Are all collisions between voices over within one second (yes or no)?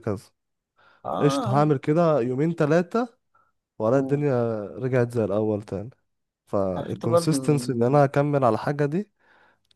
no